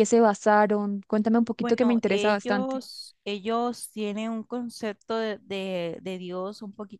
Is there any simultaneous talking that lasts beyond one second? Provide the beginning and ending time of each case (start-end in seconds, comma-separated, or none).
1.6-2.8